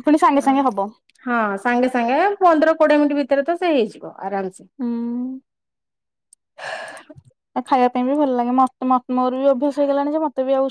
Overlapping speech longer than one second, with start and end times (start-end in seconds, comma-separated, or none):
none